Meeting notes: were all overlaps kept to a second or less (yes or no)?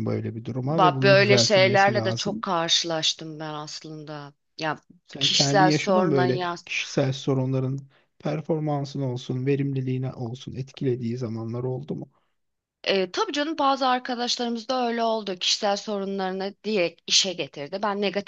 no